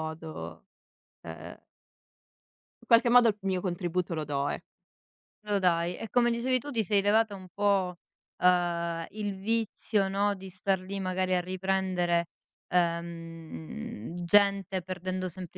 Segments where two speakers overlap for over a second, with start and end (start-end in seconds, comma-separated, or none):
none